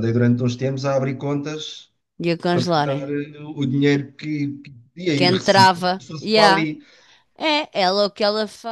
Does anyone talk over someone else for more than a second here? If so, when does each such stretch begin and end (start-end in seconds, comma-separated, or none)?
5.1-6.7